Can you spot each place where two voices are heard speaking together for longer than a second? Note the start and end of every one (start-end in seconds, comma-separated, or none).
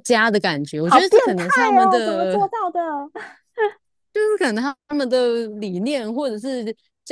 0.8-2.4